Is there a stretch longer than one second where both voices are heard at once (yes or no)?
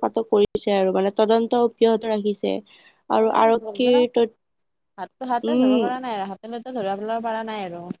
no